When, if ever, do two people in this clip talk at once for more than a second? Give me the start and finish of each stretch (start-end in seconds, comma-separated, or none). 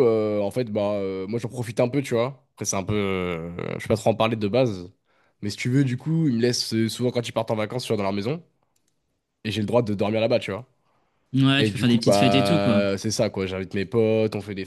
11.6-12.8